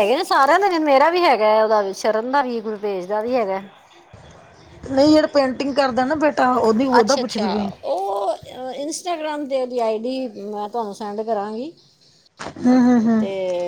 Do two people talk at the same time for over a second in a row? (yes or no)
no